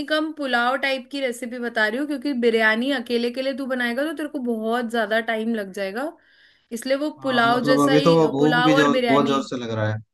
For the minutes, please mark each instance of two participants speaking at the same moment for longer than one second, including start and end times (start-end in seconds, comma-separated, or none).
7.2-9.4